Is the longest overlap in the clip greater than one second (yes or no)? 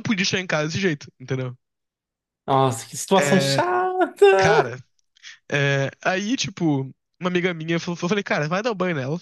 no